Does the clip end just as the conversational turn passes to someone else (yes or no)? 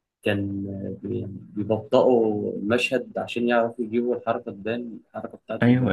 yes